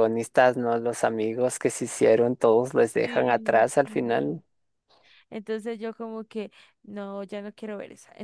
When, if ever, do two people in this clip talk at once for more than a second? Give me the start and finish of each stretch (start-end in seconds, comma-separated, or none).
3.0-4.4